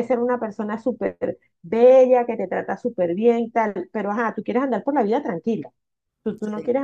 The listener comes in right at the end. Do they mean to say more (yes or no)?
no